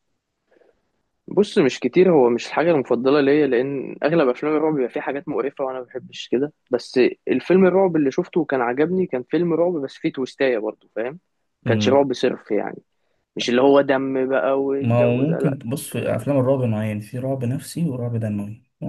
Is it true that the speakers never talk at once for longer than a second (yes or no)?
no